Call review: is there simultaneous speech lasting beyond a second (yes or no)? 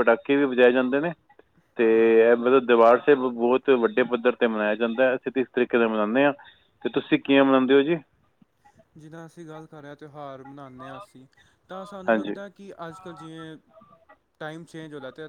no